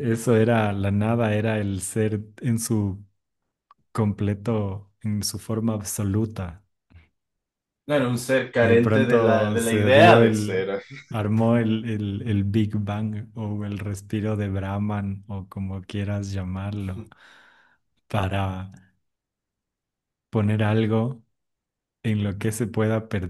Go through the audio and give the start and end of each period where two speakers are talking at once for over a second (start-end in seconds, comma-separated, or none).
8.6-10.7